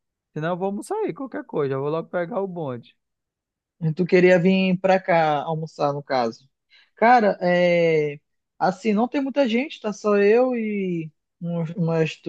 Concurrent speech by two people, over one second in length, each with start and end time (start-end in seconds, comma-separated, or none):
none